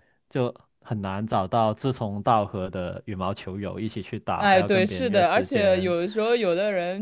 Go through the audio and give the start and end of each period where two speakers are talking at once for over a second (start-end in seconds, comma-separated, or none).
4.3-6.0